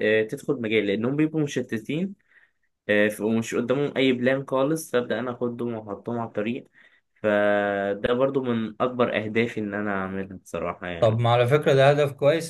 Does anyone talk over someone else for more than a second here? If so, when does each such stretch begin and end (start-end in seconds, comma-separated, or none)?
none